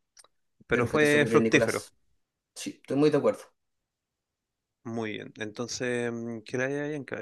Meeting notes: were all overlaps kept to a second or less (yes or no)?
no